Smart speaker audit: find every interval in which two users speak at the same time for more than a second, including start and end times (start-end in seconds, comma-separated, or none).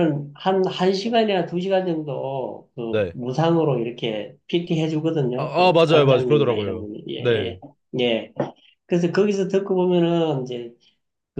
5.4-7.6